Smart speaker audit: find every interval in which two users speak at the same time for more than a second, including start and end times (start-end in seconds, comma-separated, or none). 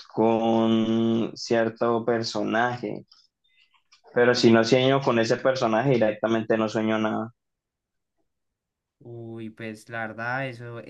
none